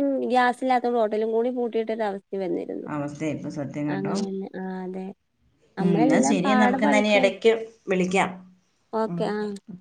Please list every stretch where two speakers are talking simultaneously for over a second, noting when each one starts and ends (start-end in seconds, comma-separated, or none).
5.8-7.3